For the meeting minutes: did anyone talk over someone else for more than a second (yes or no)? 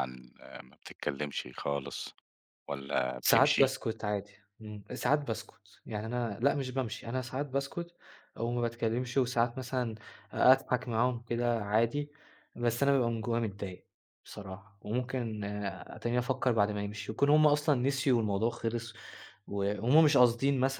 no